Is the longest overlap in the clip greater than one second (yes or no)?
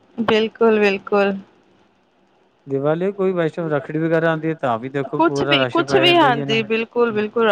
yes